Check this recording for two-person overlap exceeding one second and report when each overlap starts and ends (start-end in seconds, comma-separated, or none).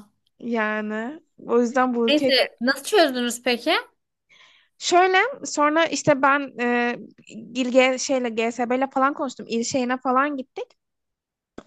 none